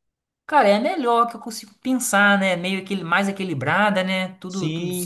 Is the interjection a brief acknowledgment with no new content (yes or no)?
no